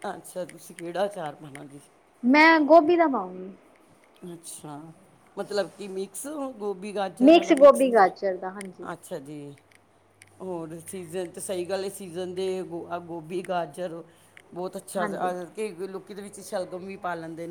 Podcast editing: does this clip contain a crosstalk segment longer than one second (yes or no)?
yes